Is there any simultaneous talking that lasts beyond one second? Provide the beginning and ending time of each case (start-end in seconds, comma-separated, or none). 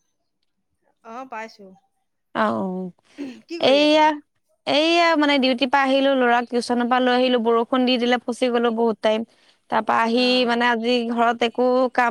none